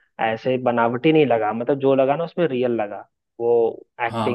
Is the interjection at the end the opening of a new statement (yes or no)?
yes